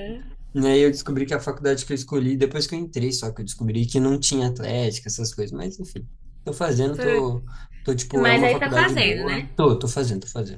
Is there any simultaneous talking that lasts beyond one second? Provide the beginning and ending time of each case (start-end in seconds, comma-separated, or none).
8.2-9.5